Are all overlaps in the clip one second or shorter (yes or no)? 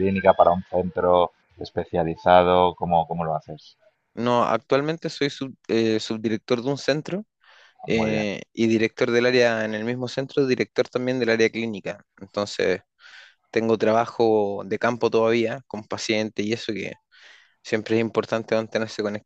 yes